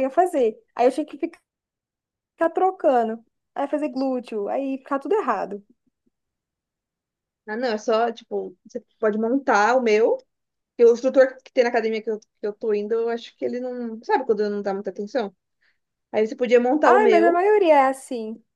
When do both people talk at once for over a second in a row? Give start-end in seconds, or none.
none